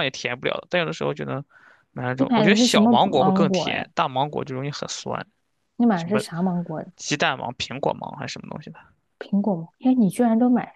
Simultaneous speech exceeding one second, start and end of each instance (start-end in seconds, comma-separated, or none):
2.2-3.9